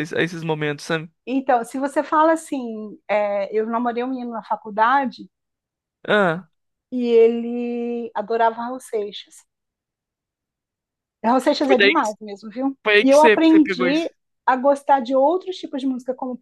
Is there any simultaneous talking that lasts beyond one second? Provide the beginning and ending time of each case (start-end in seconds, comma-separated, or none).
12.8-14.1